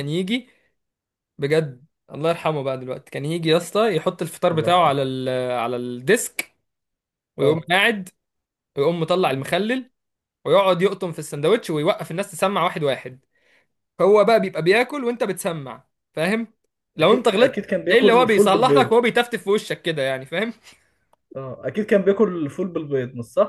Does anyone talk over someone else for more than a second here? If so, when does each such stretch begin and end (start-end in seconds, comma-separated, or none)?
17.0-19.0